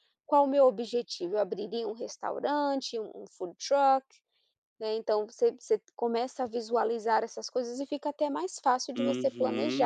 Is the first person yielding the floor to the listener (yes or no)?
yes